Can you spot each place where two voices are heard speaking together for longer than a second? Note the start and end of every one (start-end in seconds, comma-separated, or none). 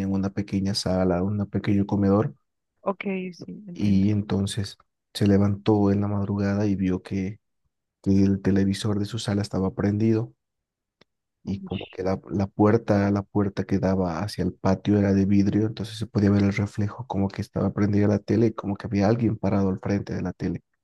none